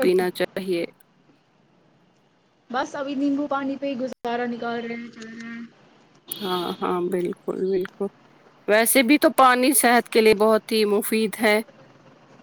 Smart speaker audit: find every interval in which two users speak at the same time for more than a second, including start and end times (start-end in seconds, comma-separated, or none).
none